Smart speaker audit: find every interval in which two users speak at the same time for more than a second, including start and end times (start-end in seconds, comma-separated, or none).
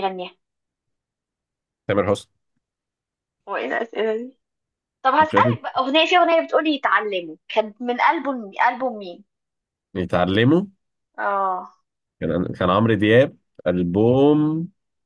none